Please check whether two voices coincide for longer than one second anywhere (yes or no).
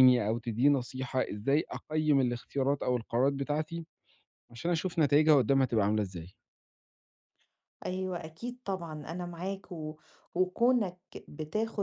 no